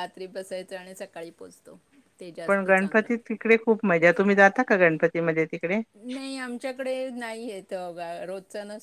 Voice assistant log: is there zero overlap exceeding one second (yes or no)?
yes